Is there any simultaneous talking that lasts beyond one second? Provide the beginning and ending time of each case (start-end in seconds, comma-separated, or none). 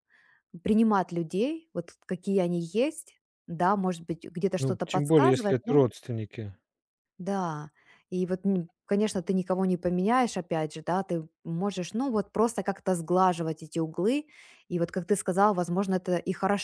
4.6-5.8